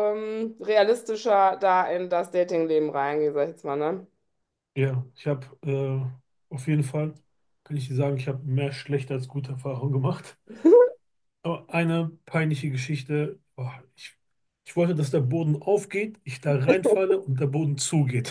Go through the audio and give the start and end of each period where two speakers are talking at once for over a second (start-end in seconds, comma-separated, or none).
none